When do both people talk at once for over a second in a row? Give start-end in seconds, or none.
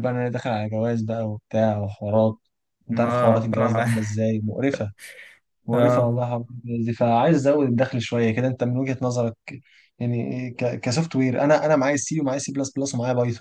2.9-4.2